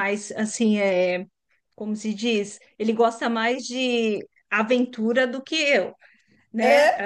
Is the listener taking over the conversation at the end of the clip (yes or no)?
no